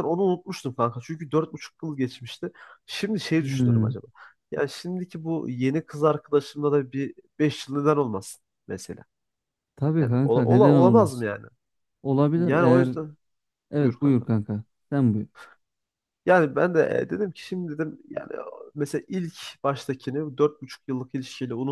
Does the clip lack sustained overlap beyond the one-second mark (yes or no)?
no